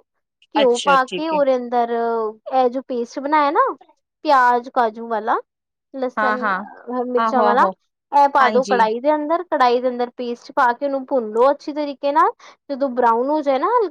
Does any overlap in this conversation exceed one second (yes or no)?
no